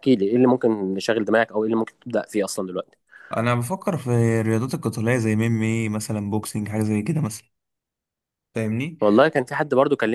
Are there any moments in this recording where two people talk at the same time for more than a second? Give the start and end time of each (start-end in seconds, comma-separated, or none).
none